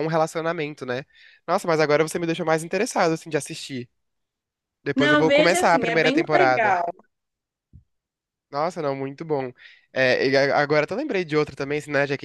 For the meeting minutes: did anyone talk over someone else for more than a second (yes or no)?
yes